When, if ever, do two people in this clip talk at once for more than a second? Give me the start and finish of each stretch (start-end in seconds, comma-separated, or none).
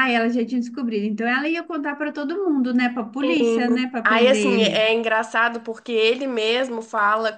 3.2-4.8